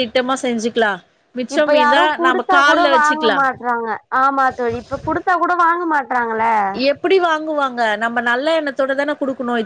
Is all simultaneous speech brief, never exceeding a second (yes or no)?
no